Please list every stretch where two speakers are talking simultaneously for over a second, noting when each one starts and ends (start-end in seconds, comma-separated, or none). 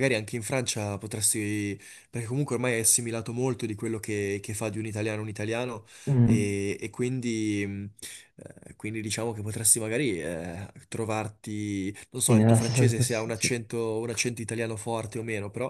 12.1-13.6